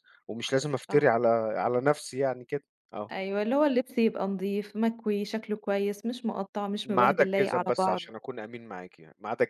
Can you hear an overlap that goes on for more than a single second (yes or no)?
yes